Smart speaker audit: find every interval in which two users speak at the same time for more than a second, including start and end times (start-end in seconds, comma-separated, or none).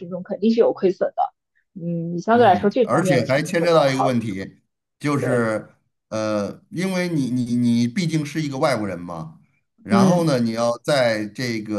2.3-4.3